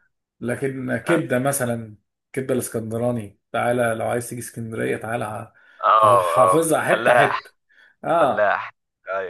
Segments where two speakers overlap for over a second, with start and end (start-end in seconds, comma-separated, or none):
6.0-7.4